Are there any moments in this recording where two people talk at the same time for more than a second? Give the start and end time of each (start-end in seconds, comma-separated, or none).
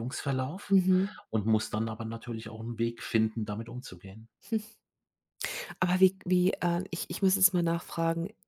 none